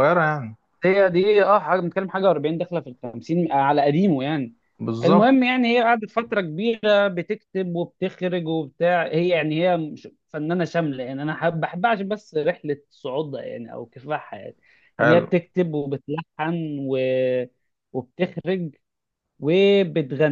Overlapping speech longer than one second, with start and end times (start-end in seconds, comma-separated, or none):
none